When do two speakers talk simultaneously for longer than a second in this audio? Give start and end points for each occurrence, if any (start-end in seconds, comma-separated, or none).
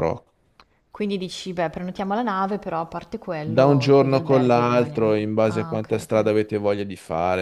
3.4-6.2